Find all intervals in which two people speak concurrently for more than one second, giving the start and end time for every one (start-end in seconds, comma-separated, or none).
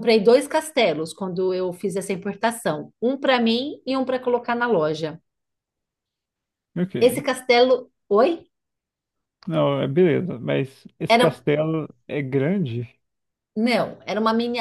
none